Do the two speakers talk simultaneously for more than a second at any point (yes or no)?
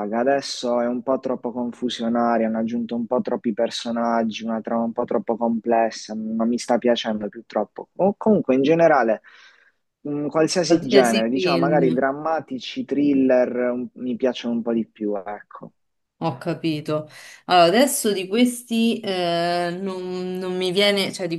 yes